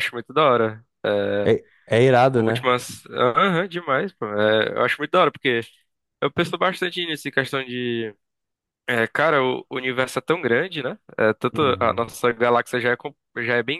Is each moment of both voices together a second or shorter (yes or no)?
yes